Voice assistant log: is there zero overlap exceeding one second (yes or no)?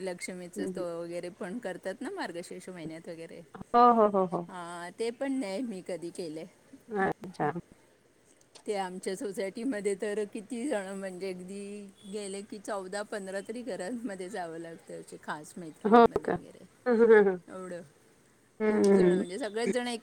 yes